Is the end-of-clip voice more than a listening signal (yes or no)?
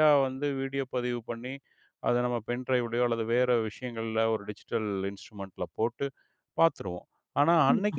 no